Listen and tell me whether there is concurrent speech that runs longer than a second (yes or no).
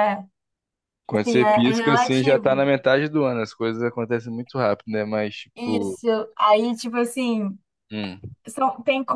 yes